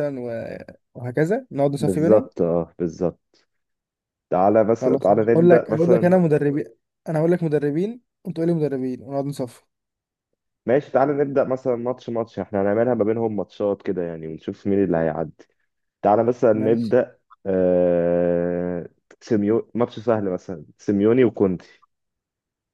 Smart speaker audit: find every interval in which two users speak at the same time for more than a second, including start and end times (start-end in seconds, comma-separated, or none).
4.8-6.2